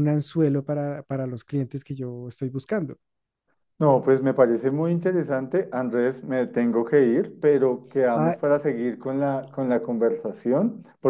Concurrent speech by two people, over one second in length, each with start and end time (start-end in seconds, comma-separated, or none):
none